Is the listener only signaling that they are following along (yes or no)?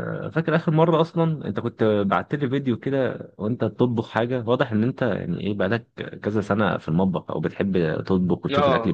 no